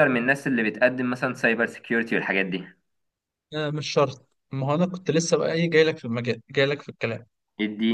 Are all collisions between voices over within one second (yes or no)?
yes